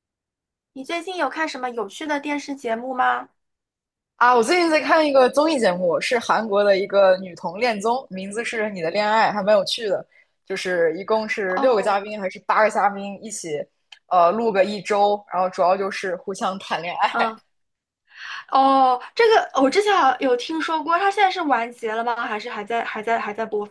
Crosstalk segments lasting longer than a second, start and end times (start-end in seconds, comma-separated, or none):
none